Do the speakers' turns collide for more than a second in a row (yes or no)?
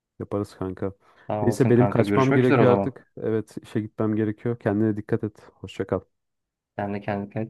yes